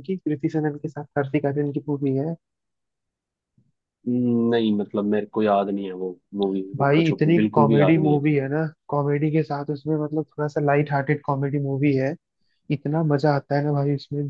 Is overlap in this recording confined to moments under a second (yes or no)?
no